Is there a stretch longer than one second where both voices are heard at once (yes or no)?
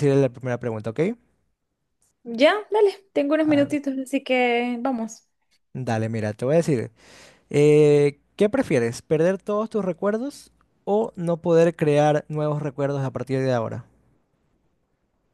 no